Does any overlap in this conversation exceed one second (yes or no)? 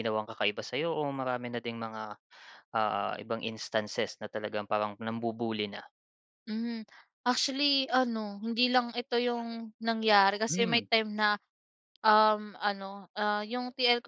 no